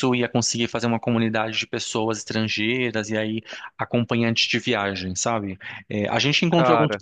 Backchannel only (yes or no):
yes